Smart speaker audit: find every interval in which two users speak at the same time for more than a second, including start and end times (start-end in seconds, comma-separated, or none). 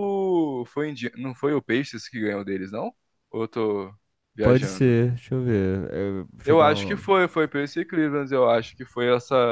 none